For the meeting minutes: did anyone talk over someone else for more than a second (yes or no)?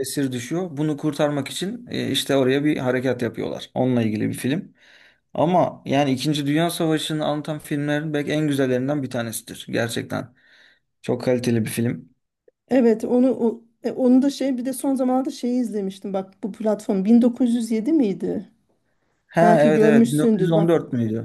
yes